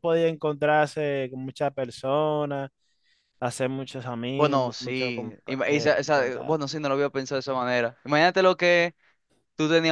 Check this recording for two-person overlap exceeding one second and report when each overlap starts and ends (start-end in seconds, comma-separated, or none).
4.3-6.7